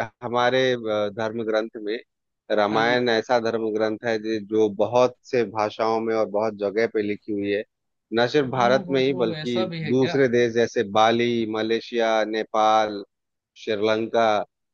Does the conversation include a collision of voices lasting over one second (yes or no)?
yes